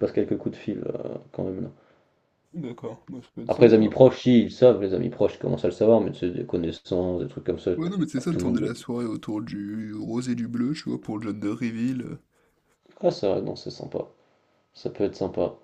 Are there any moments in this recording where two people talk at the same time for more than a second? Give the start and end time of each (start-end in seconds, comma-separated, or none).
none